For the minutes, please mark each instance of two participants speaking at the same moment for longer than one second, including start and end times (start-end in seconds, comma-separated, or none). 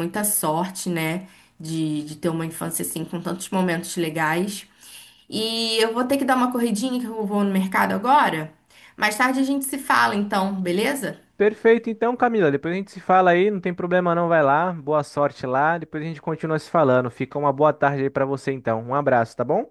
none